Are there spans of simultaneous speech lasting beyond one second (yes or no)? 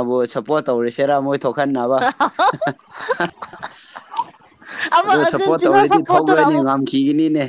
yes